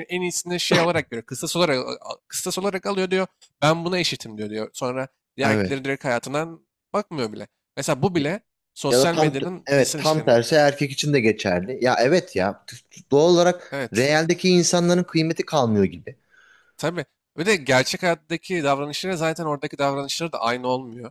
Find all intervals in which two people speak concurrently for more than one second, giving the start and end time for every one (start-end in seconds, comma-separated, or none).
8.9-10.3